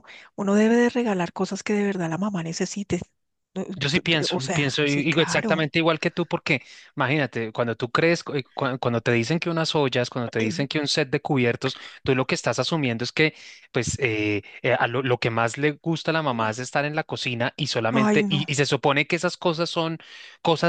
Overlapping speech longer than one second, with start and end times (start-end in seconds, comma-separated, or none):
3.8-5.7